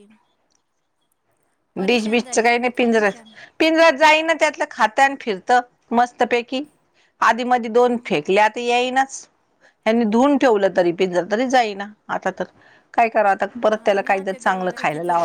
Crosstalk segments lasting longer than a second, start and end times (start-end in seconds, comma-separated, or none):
1.9-3.2